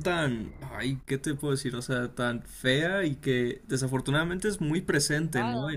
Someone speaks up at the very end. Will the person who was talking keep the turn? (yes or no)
yes